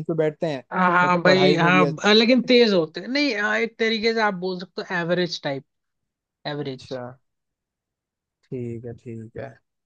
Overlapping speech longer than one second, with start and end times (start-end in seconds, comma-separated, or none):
1.0-2.5